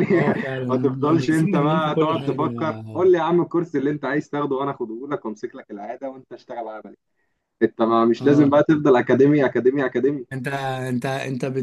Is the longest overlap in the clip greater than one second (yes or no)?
yes